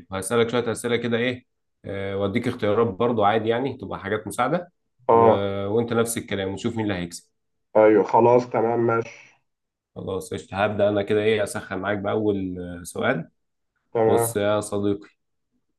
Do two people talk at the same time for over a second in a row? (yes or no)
no